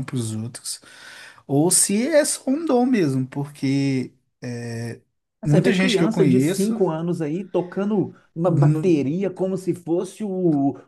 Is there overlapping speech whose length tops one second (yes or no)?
yes